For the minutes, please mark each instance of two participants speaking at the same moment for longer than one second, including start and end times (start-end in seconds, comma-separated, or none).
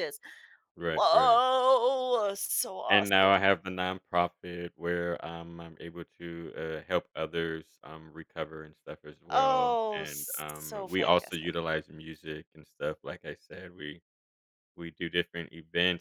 9.3-11.6